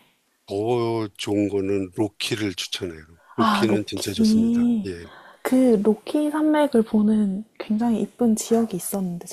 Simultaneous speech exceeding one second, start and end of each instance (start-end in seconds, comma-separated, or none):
3.4-4.9